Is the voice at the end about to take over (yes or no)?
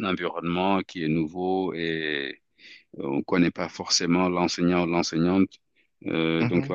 no